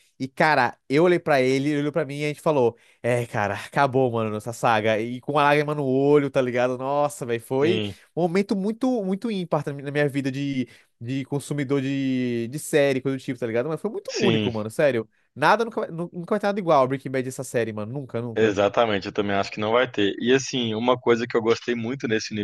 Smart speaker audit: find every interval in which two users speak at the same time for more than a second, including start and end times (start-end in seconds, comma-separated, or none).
none